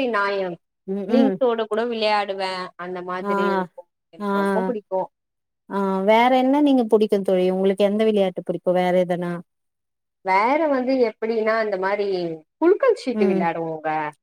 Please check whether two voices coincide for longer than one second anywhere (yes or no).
no